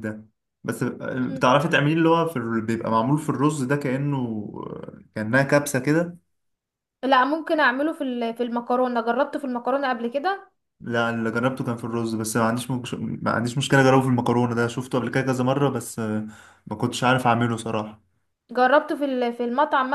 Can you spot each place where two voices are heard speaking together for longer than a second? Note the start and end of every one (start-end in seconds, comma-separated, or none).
none